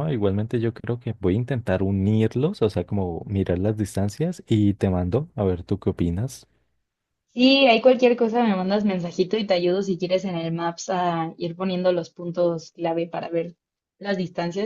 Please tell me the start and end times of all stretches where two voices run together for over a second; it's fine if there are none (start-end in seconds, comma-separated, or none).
none